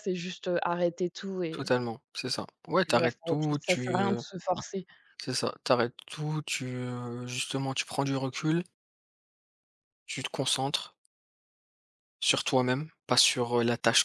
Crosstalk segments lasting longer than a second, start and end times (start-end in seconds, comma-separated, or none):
2.9-4.2